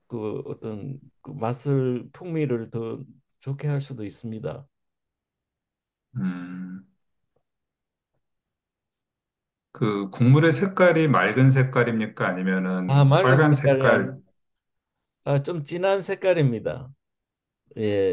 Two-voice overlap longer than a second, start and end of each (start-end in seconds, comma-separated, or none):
12.9-14.2